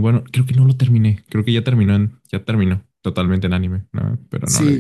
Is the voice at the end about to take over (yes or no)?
yes